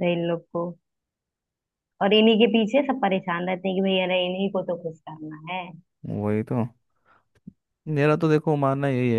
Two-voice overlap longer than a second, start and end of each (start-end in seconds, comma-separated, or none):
none